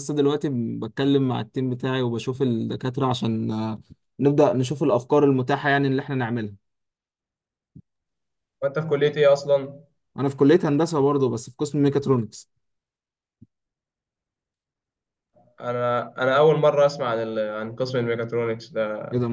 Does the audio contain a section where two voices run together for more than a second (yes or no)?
no